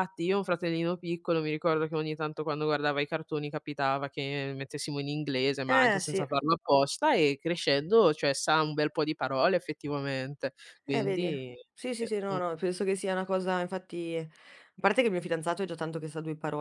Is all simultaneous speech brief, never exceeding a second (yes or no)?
yes